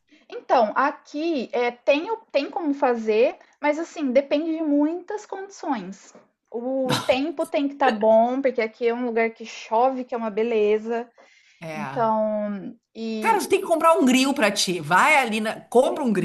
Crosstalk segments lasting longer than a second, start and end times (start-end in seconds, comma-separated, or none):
none